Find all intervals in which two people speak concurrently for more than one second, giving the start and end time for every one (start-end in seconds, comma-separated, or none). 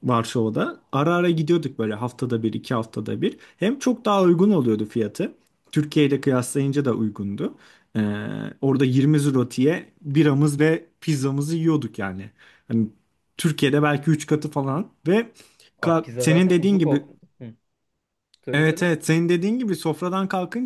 15.8-17.0